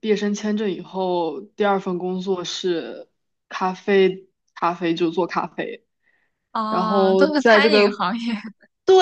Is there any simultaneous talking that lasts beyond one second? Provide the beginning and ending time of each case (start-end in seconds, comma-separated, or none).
6.7-8.0